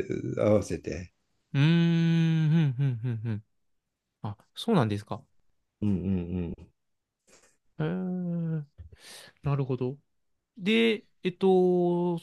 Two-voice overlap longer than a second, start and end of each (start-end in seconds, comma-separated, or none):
none